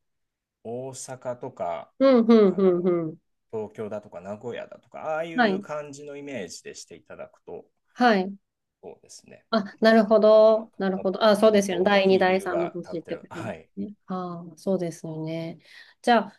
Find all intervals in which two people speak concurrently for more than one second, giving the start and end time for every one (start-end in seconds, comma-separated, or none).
10.2-13.7